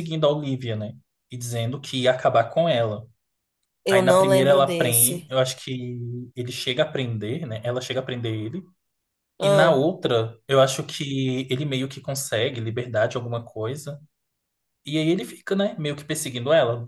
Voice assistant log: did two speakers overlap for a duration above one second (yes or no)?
yes